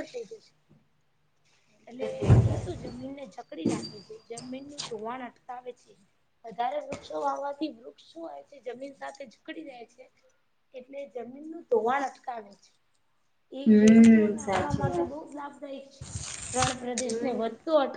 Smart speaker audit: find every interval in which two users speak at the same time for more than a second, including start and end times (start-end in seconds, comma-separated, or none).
13.6-15.1